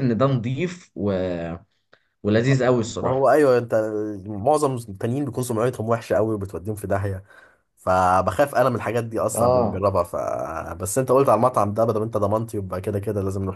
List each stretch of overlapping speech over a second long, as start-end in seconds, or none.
none